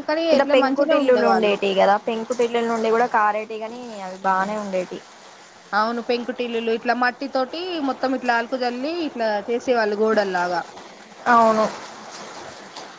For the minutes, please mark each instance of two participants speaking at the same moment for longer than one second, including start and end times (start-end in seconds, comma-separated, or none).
none